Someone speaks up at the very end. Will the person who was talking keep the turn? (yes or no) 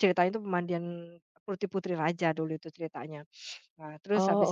yes